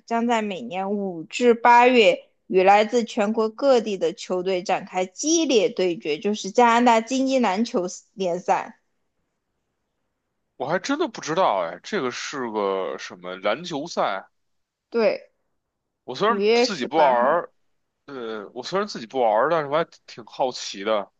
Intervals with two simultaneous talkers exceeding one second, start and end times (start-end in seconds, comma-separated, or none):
16.3-17.5